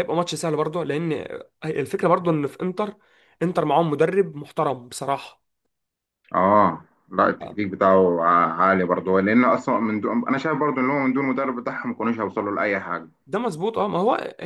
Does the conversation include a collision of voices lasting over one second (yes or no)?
no